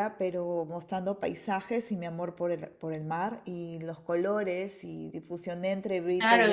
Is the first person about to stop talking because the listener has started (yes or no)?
yes